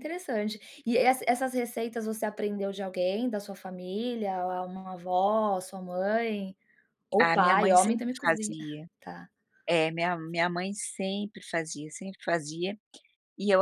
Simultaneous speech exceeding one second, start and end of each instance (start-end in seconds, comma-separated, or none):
7.2-8.6